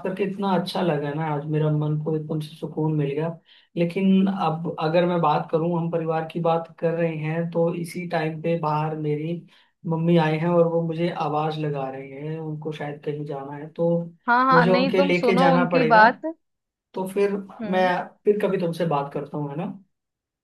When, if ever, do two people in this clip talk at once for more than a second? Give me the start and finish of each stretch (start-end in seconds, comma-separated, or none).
14.5-16.0